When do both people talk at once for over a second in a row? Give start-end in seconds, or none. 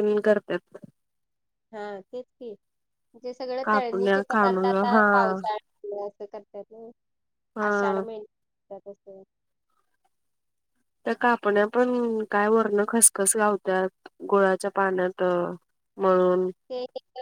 3.6-5.0